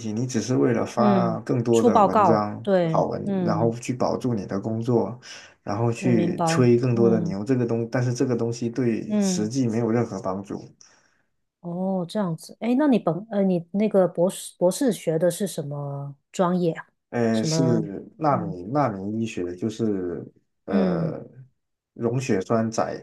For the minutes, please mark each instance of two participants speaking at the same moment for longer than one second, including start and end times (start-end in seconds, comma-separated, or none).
0.9-3.7, 6.0-7.3